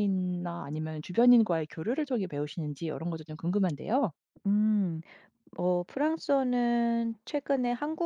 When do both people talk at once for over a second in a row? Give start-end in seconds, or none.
none